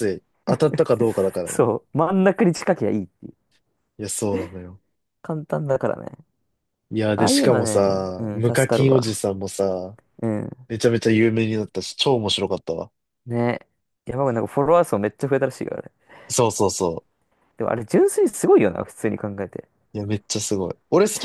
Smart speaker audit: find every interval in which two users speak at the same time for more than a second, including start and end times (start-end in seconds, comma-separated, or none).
7.2-9.2